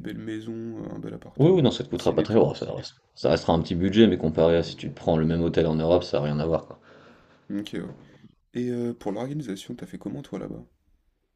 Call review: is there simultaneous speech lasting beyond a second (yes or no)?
yes